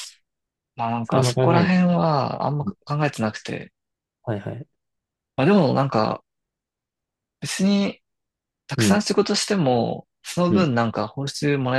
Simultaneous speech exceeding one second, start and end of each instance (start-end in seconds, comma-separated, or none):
none